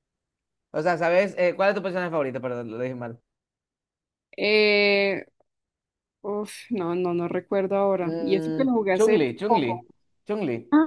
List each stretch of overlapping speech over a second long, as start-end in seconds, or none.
8.0-9.8